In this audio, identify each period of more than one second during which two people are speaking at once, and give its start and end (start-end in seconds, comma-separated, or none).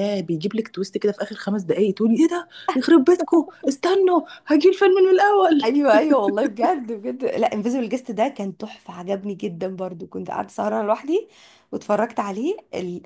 none